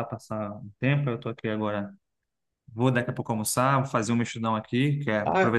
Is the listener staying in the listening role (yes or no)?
yes